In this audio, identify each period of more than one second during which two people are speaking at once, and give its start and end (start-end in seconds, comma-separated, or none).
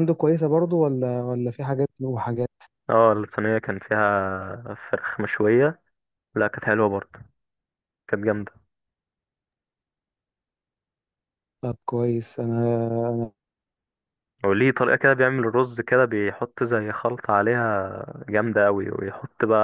none